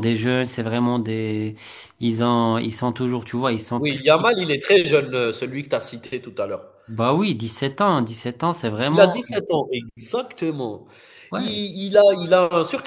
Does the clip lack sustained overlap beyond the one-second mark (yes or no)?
yes